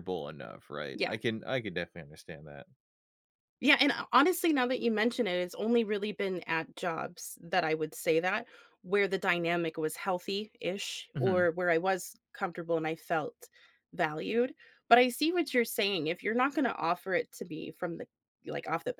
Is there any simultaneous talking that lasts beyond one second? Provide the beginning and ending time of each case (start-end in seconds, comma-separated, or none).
none